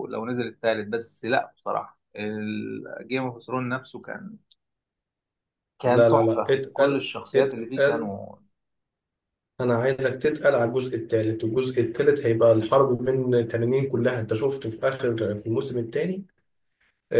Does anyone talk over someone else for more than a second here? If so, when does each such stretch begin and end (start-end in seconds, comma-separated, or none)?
5.8-8.1